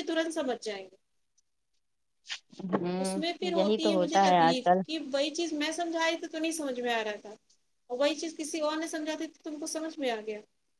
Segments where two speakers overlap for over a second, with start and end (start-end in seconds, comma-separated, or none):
3.0-4.8